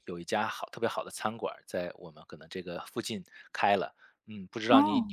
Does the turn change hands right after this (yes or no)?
no